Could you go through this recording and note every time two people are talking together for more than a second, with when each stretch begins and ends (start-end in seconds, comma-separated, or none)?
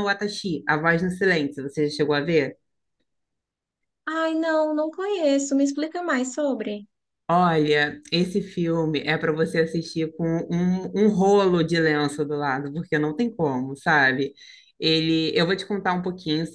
none